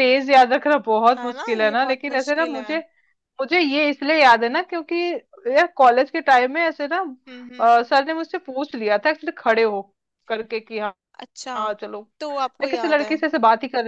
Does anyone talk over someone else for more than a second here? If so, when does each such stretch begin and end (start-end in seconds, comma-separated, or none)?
1.2-2.8